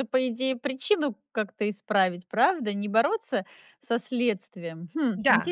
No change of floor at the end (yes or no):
no